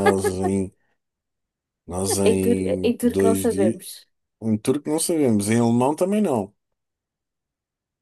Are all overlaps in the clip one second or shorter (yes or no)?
no